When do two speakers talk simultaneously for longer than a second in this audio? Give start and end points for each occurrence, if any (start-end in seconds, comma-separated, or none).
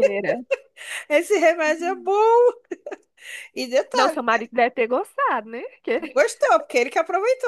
none